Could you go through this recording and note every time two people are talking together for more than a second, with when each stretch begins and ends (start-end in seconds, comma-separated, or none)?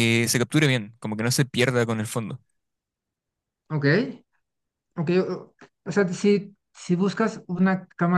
none